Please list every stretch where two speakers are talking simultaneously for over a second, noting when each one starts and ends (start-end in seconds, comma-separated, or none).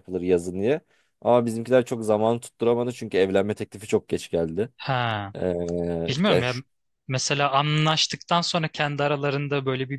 none